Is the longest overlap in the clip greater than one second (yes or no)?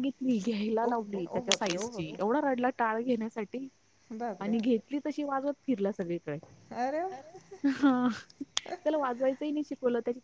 yes